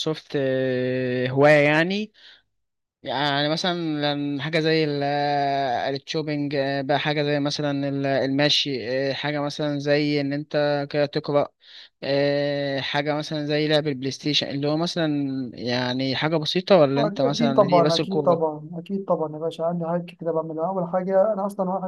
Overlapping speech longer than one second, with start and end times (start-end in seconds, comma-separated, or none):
17.0-18.4